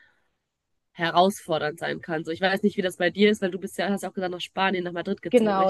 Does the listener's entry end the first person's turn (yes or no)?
yes